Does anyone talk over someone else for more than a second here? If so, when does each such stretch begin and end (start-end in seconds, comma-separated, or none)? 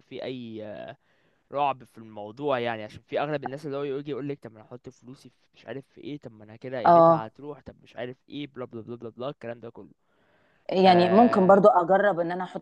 none